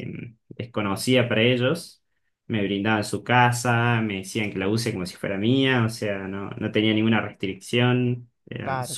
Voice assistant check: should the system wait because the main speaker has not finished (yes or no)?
no